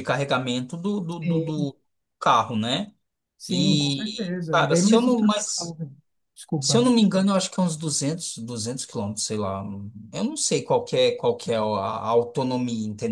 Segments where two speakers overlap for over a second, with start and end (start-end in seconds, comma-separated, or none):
3.5-5.7